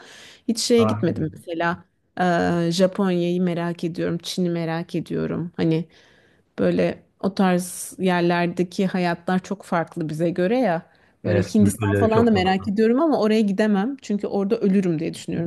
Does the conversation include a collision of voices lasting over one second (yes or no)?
yes